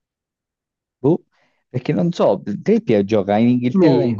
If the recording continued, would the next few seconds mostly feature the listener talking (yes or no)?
no